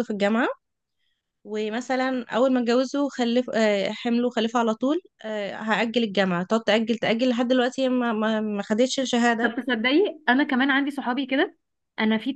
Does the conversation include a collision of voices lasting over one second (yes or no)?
no